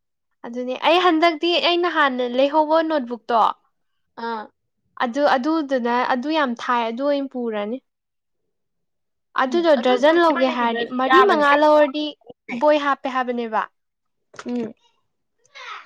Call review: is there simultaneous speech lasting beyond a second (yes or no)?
yes